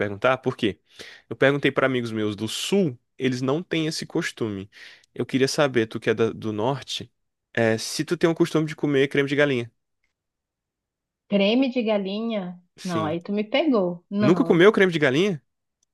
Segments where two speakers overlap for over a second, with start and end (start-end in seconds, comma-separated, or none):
none